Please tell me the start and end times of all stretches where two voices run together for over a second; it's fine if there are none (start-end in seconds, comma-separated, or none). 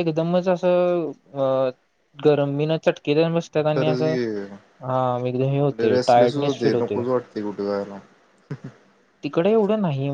5.5-7.0